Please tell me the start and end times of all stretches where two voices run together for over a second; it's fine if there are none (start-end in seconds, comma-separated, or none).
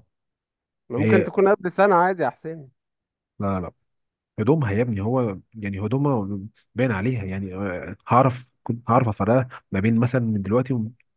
none